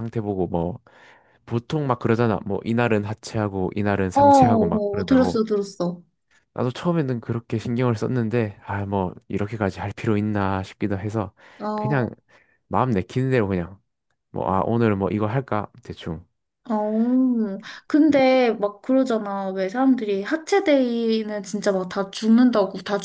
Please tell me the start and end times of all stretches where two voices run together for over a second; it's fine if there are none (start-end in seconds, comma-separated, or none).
4.1-5.4